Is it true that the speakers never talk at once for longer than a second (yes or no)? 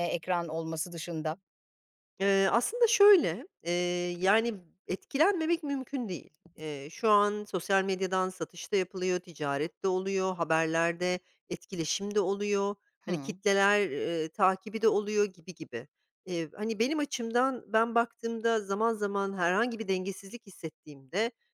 yes